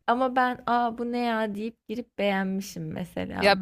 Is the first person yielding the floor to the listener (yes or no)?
yes